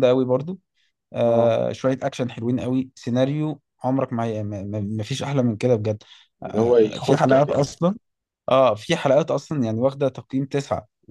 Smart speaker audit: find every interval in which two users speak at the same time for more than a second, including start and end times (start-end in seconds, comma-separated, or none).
6.4-7.8